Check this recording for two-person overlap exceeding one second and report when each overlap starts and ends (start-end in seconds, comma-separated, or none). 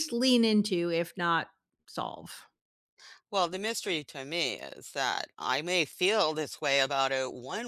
none